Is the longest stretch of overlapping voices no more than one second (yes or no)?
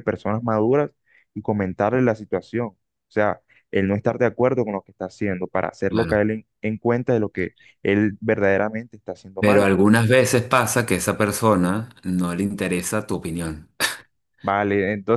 yes